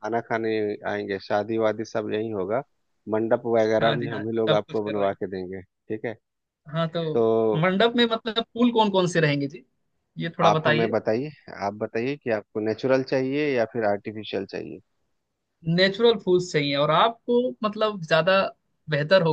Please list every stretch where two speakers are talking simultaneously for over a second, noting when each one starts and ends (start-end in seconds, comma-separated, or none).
3.8-5.2